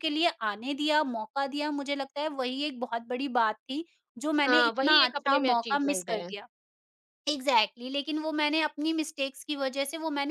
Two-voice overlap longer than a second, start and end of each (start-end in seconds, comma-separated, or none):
4.5-6.3